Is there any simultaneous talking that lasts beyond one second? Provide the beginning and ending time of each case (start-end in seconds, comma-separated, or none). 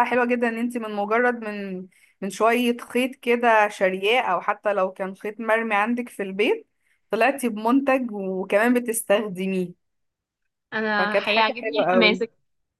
11.0-12.2